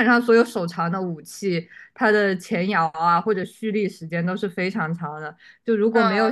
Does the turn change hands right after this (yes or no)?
no